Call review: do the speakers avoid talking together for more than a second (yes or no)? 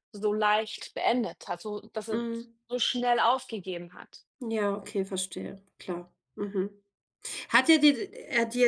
yes